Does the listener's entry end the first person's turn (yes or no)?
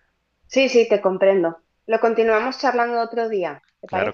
yes